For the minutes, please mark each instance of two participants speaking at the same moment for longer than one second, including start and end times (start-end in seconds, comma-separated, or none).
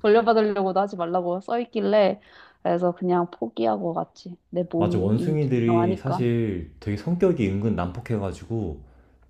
4.8-6.2